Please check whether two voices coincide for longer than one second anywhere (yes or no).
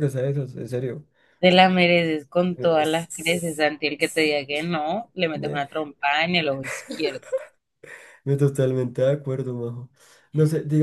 yes